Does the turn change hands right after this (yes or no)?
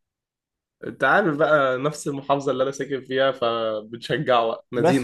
yes